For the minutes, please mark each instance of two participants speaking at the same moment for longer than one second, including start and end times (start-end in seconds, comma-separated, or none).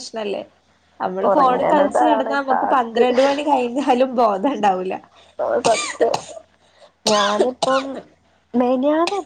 1.3-3.1